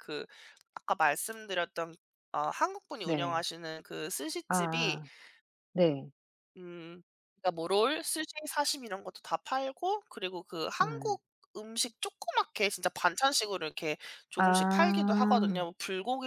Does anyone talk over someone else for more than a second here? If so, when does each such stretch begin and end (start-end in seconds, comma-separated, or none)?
14.4-15.6